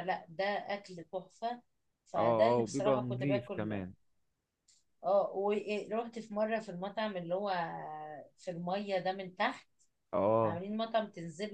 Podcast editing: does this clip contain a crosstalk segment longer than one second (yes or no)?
yes